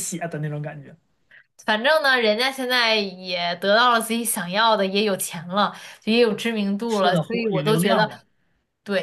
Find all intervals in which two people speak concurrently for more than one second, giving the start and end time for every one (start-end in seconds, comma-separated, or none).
6.9-8.1